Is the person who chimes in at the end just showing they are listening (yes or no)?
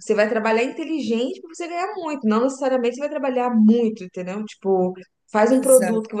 yes